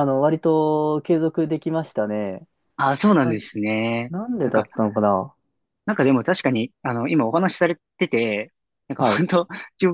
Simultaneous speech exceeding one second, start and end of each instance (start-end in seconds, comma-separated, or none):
none